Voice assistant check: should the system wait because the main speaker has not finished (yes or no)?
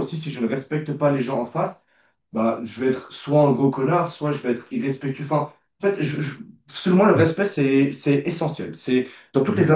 yes